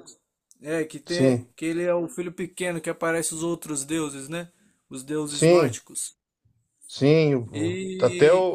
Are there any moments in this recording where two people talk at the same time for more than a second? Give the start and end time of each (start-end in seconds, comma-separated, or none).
none